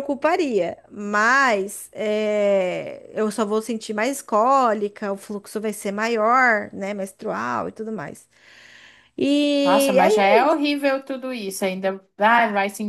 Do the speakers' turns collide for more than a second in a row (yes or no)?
no